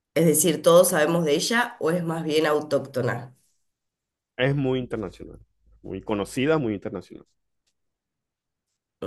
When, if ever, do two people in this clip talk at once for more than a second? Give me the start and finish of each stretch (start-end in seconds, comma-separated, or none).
none